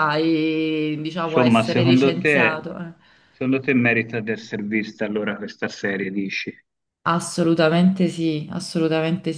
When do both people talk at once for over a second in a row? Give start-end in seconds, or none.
1.2-2.6